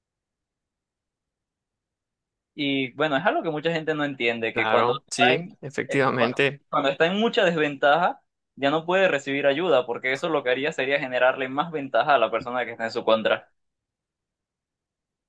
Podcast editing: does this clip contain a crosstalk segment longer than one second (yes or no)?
yes